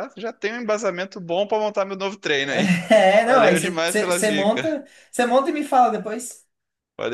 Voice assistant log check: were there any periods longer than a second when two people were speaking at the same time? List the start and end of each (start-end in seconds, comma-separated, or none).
3.2-4.7